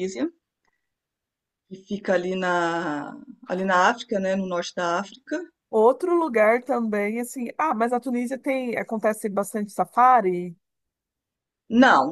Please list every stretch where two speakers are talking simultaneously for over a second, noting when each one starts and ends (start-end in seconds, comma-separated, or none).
none